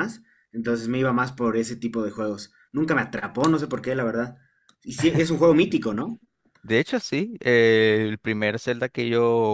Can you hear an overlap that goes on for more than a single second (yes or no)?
no